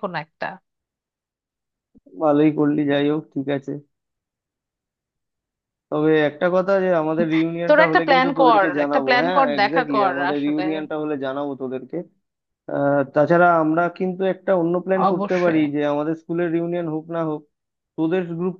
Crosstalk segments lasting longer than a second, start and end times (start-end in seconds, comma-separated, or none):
7.7-10.6